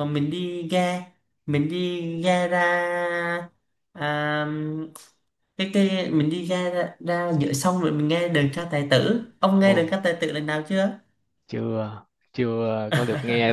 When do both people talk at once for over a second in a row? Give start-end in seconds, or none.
none